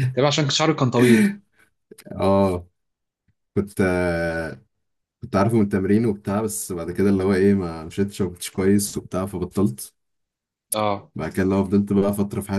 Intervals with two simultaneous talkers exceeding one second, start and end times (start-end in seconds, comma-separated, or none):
none